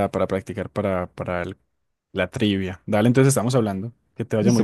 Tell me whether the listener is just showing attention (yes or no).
no